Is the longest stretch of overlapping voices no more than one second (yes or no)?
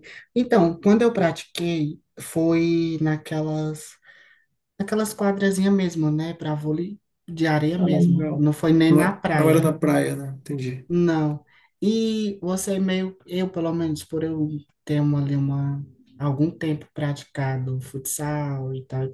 no